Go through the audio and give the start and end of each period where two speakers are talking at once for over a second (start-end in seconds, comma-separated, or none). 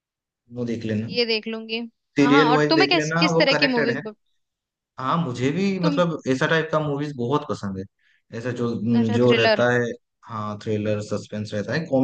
2.2-4.0